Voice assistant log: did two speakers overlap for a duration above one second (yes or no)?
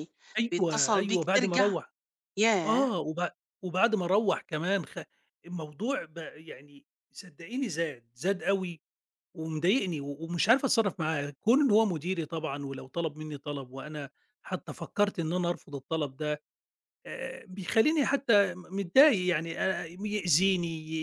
yes